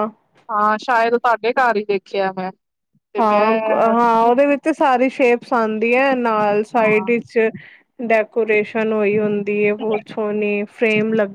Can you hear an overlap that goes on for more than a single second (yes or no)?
no